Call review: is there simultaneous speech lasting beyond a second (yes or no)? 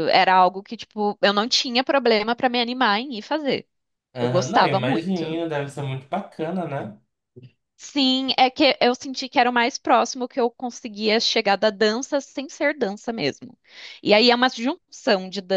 yes